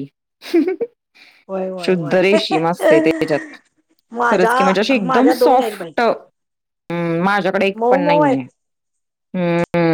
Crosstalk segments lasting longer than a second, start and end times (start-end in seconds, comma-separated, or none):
4.3-5.9